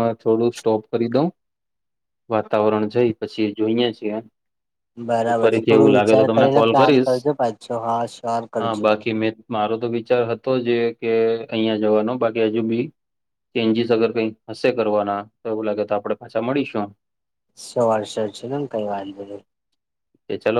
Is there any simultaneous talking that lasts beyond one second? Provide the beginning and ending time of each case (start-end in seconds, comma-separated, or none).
5.2-7.1